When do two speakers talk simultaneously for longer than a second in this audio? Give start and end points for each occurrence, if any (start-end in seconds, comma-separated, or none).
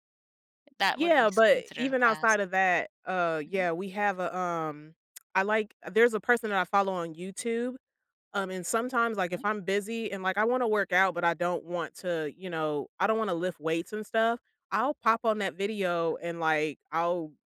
0.9-2.4